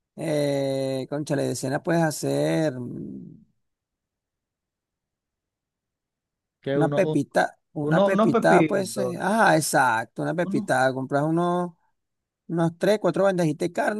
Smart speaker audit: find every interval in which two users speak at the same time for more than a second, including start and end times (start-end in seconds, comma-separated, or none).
7.8-9.2